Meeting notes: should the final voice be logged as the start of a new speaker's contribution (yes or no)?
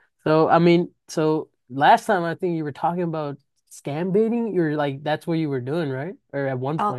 yes